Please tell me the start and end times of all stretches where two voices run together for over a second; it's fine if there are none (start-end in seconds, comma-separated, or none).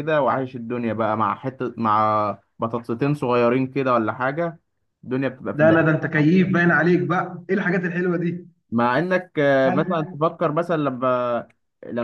none